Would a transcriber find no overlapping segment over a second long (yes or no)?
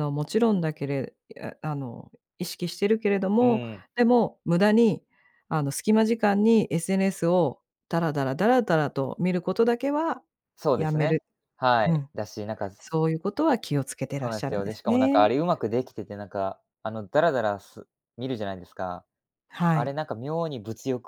no